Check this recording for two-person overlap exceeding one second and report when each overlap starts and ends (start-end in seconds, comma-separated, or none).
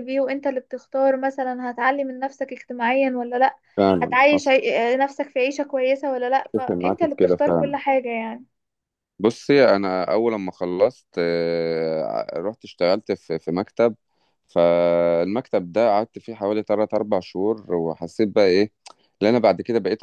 6.5-7.8